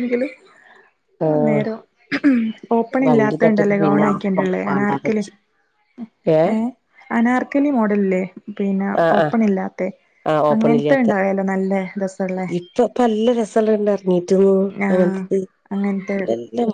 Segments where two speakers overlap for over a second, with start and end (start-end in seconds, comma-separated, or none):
3.0-5.2